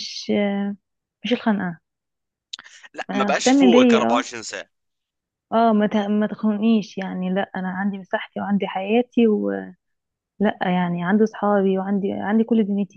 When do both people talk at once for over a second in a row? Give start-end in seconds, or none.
3.1-4.3